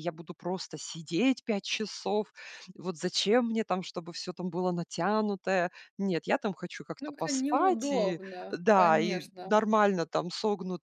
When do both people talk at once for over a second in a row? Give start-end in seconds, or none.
7.0-9.6